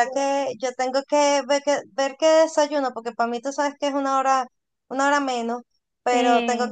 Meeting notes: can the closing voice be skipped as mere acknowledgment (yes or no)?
yes